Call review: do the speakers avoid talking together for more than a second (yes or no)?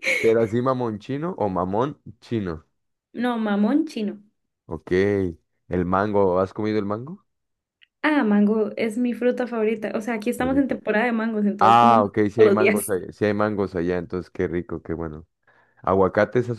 no